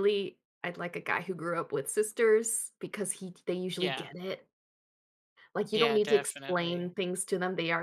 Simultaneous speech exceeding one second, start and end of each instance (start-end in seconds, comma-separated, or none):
5.7-7.0